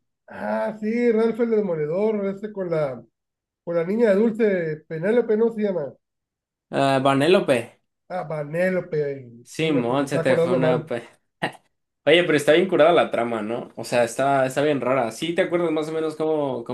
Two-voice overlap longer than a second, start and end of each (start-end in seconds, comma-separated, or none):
9.4-10.9